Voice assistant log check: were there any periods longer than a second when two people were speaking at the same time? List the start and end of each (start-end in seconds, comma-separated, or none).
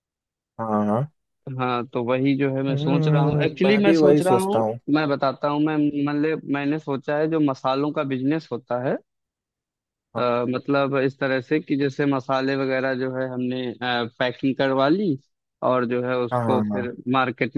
2.7-4.6